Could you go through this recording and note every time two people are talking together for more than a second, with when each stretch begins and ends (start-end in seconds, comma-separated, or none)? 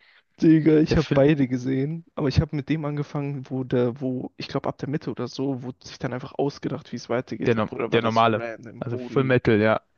7.5-9.4